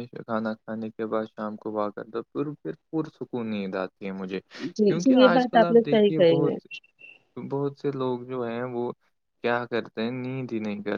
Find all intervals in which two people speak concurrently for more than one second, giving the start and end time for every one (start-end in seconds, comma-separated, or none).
4.8-6.5